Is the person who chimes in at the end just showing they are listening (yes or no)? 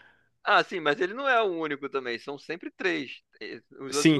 no